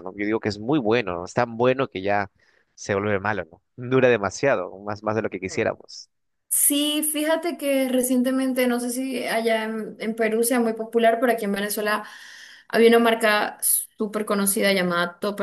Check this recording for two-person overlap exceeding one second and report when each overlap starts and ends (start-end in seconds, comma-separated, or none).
none